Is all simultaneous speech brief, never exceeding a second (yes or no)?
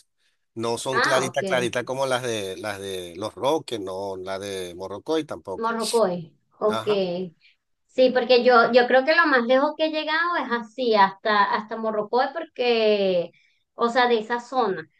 yes